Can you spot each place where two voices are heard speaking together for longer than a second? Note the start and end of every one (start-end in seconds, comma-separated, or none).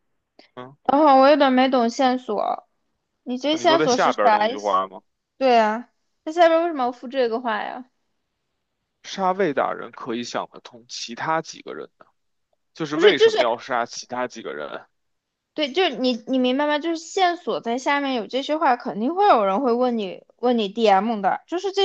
3.6-4.8